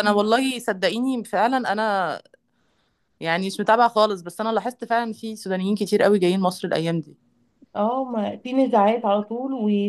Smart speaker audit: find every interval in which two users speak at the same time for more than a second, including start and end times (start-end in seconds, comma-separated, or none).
none